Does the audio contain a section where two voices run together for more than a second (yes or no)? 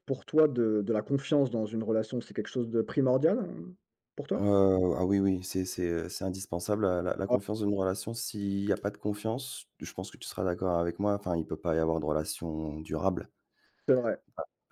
no